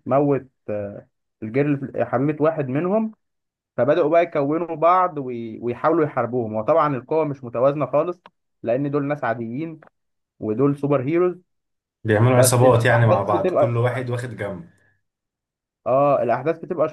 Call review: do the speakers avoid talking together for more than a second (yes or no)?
no